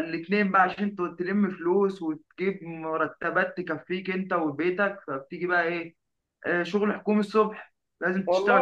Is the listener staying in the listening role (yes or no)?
yes